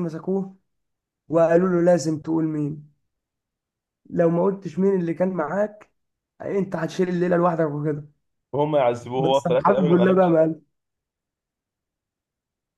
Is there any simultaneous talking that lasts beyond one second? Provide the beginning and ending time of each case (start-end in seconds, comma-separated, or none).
9.1-10.4